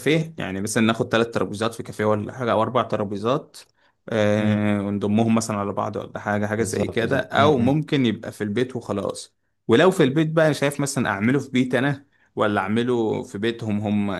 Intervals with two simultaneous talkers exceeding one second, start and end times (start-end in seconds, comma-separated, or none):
6.6-7.8